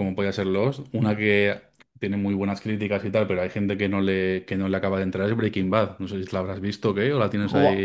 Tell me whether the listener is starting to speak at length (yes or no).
yes